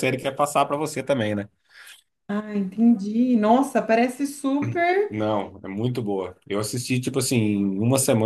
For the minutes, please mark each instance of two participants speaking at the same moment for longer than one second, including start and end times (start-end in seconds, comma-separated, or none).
none